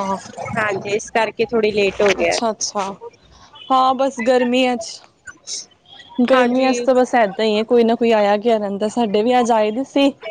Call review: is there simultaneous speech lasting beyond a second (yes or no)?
no